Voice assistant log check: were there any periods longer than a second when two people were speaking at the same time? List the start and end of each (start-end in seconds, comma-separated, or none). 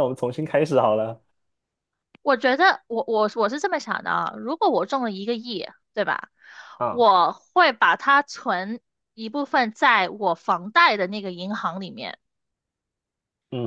none